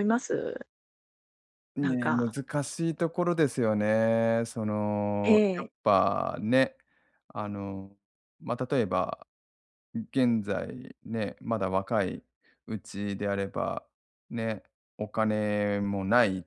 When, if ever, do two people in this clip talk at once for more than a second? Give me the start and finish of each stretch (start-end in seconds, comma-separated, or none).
none